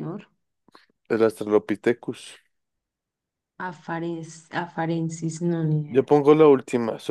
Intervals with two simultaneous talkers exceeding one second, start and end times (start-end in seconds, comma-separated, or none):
none